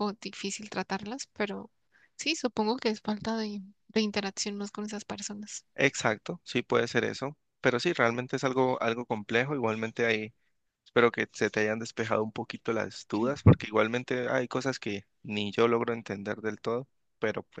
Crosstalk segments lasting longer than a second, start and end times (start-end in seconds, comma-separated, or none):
none